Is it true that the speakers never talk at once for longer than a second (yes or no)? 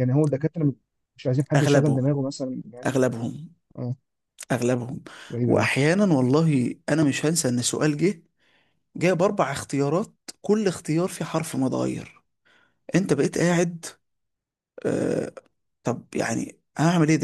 yes